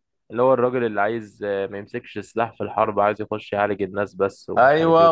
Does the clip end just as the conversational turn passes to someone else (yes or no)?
yes